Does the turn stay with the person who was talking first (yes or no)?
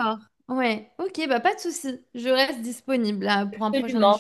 no